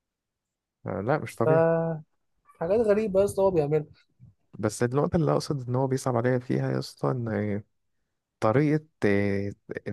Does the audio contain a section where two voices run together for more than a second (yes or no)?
no